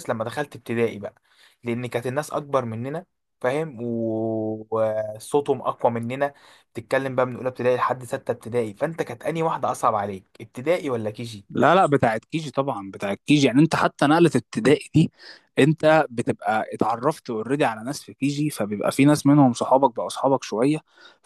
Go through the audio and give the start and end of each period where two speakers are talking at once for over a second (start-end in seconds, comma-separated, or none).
none